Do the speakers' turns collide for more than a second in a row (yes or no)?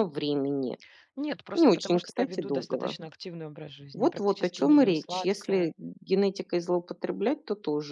yes